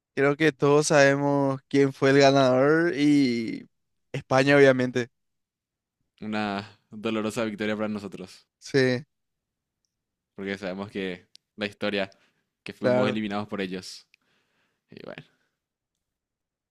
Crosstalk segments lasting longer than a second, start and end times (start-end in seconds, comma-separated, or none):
none